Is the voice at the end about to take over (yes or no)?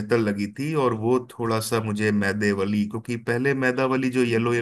no